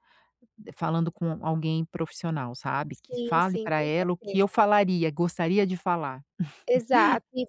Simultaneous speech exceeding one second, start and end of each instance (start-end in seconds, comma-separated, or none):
2.9-4.6